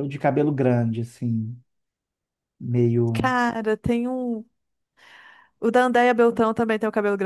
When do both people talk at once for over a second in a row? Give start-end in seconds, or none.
none